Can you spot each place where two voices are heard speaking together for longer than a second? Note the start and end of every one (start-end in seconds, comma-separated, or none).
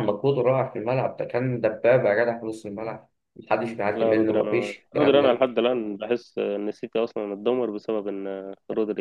3.9-5.5